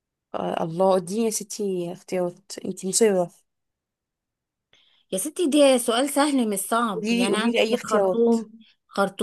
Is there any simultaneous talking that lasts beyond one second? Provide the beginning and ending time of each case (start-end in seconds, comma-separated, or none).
6.9-8.3